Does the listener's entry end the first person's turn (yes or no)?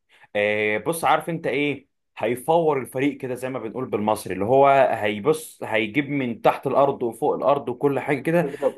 no